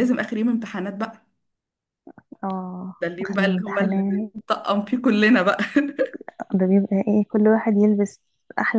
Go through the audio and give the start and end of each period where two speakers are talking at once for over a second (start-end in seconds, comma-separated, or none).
3.0-4.3